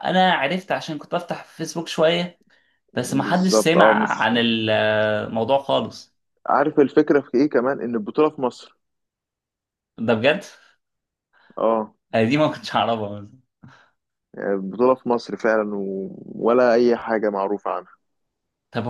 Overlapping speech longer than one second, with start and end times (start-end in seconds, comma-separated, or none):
2.9-4.3